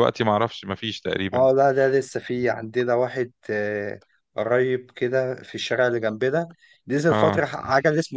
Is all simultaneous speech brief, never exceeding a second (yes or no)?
yes